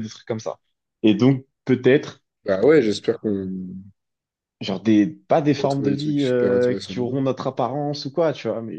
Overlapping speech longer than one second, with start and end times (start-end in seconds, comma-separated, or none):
5.5-7.2